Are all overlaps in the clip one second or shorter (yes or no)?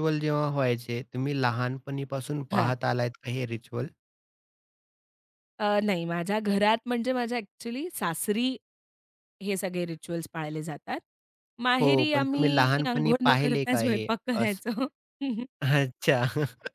no